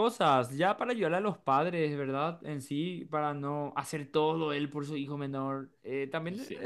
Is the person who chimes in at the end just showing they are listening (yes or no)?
yes